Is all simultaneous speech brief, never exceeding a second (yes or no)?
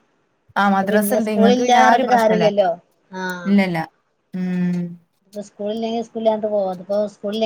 no